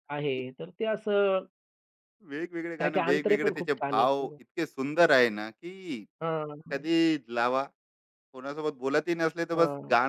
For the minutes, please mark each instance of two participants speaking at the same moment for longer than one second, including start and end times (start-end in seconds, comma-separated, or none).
2.8-4.4